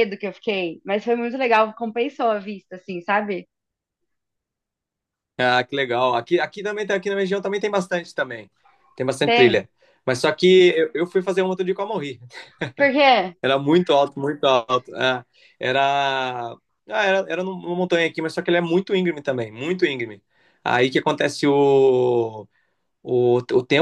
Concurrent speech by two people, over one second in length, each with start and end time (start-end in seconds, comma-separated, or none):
none